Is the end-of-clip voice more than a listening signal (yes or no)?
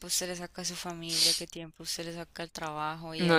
yes